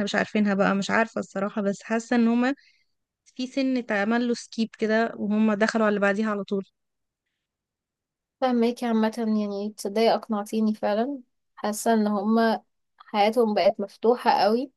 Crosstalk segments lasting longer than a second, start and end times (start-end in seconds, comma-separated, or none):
none